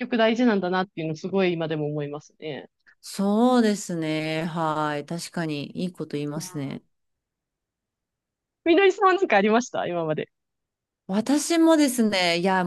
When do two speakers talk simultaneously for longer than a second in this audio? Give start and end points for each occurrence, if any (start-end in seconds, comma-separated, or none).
none